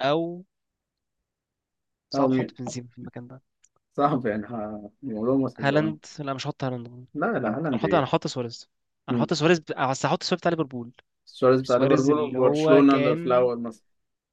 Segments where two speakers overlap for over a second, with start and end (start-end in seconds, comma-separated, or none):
11.6-13.5